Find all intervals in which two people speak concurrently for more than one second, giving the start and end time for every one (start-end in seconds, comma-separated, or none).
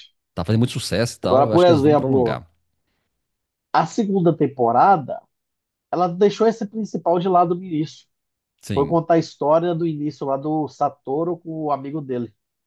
1.2-2.4